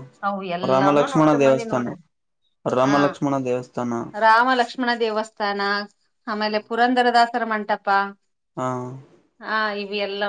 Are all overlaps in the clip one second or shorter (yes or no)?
no